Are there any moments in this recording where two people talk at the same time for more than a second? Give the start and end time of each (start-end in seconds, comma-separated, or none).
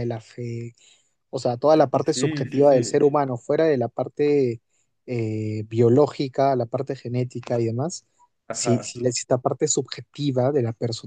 1.7-3.0